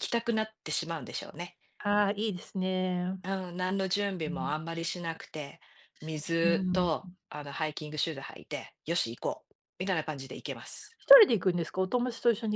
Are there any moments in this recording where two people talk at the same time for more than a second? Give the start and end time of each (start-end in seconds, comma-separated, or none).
none